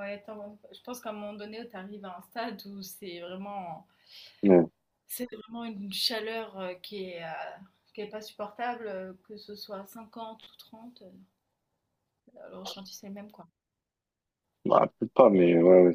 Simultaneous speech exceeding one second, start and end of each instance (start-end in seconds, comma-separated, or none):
none